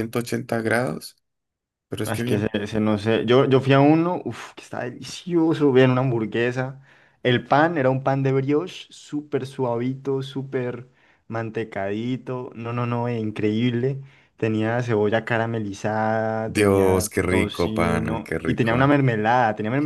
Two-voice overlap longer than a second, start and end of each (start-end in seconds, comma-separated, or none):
16.4-19.0